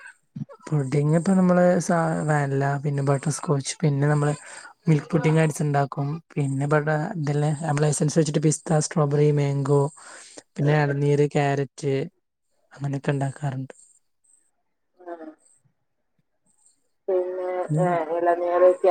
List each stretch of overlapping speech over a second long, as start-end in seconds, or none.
none